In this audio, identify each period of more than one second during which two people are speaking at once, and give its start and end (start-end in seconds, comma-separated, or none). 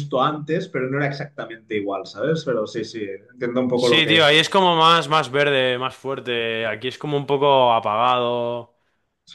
none